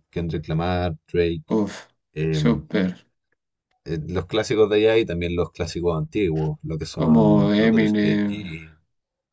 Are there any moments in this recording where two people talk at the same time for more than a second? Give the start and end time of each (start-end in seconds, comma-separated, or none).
7.0-8.3